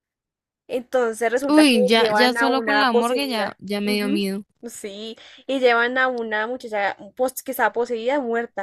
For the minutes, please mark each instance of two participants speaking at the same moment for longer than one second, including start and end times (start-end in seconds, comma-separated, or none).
1.5-4.3